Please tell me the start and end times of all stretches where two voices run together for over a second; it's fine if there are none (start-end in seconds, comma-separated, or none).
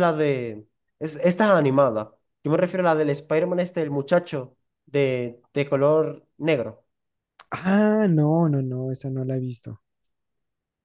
none